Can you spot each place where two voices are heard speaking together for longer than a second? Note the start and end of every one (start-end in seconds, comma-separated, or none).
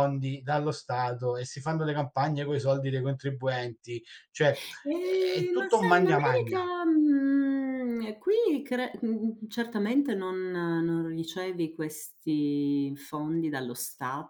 5.0-6.7